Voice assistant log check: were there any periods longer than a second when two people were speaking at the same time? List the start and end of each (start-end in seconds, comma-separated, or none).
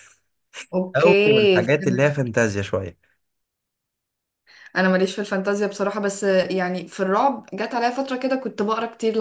0.9-2.3